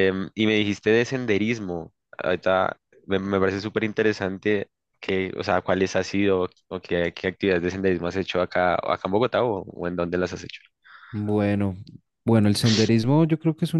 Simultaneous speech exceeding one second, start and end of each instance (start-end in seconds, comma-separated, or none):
none